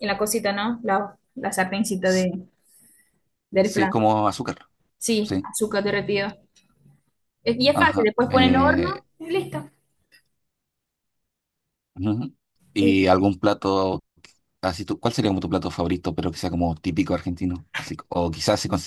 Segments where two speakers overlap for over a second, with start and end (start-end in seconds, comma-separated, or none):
7.7-9.0